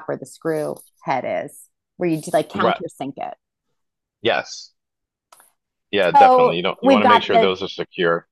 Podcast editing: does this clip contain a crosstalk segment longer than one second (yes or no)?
yes